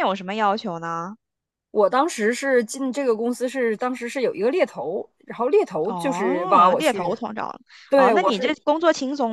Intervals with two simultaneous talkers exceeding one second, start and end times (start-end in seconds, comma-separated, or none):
5.8-7.2